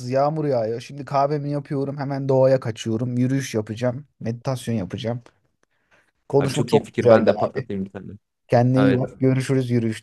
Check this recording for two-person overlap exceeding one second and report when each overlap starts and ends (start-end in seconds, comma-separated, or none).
6.4-7.7